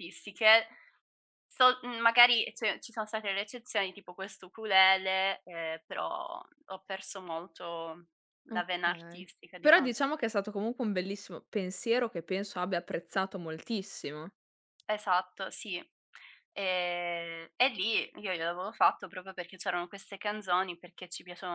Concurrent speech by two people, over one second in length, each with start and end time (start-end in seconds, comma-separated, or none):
8.5-9.9